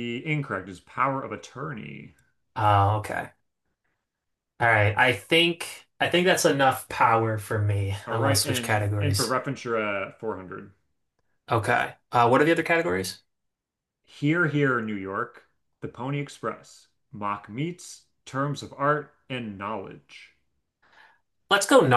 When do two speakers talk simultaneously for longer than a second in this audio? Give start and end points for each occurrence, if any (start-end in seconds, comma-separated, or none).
8.1-9.3